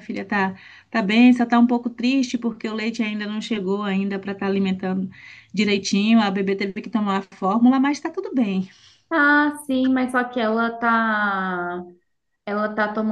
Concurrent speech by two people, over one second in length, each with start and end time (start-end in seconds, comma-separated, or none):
none